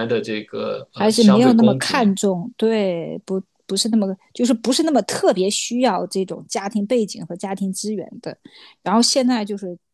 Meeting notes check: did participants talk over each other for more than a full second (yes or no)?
yes